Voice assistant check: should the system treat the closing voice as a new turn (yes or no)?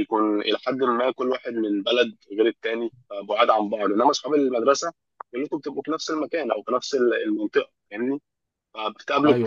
no